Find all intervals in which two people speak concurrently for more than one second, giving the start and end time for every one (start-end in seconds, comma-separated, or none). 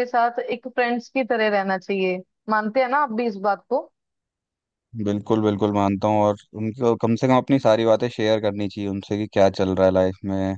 none